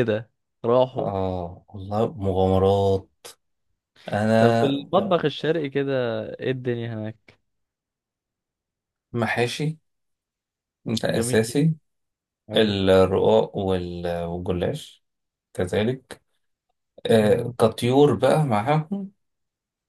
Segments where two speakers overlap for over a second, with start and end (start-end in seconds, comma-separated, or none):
none